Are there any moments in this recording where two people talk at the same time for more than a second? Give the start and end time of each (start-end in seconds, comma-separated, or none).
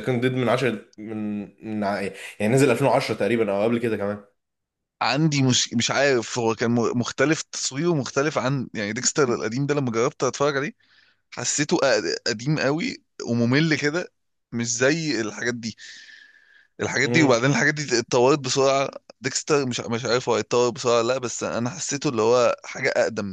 none